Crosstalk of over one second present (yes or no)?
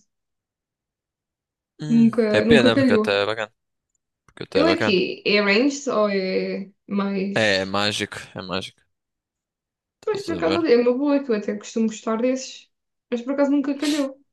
yes